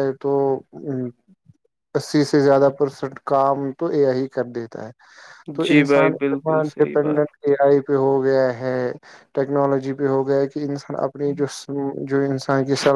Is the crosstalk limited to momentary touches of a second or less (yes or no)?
no